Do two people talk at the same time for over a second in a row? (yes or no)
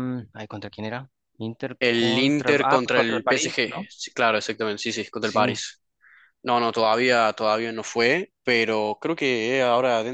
yes